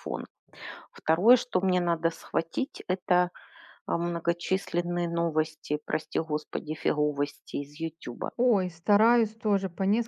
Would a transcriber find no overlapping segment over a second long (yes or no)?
yes